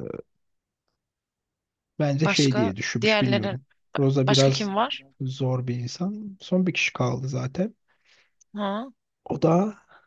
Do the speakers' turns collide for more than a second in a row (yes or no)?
yes